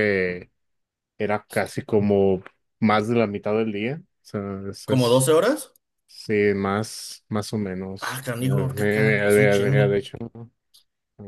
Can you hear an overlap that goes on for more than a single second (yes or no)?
yes